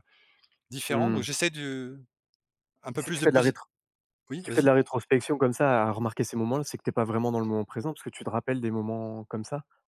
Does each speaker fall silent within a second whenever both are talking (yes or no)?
yes